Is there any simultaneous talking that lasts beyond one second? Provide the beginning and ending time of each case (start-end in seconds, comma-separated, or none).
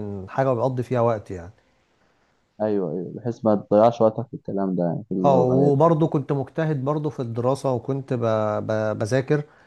none